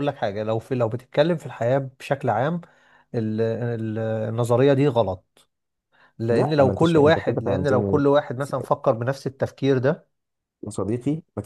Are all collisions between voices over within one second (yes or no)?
no